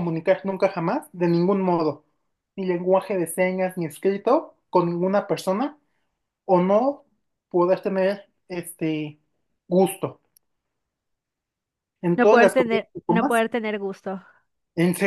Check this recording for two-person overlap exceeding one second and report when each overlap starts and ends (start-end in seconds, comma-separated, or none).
12.1-13.4